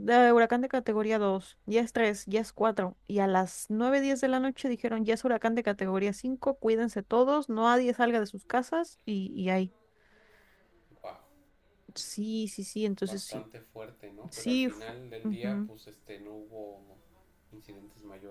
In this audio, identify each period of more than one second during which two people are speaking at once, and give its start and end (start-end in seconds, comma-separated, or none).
14.3-15.7